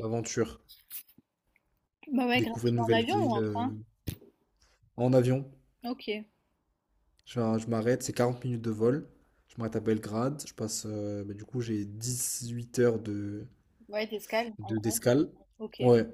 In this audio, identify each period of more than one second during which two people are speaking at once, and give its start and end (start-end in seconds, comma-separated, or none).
2.3-3.6